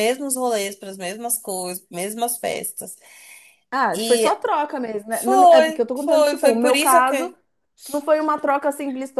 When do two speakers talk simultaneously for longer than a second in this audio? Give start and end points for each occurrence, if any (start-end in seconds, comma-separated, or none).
5.1-7.3